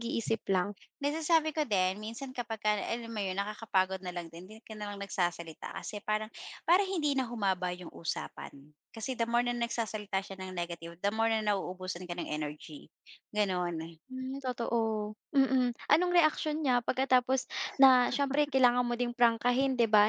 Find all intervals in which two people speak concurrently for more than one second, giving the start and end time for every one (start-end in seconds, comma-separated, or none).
none